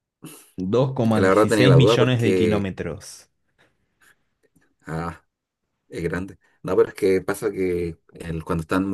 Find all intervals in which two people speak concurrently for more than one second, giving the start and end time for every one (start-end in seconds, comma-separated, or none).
1.0-2.7